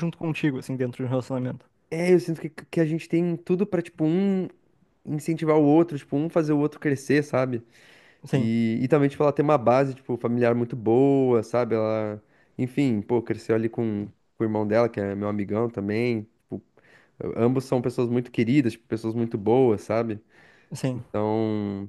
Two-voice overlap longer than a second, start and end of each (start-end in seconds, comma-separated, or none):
none